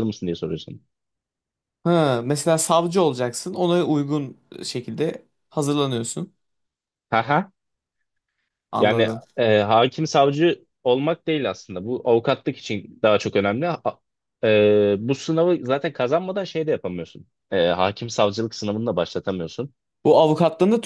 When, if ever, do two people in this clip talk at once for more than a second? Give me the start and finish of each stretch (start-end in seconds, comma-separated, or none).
none